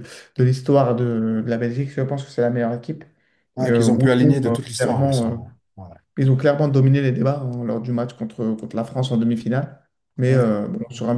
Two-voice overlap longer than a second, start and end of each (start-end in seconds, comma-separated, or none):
3.6-5.4